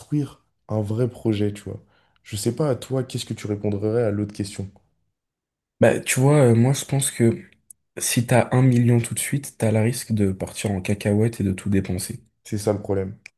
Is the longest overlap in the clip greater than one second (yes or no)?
no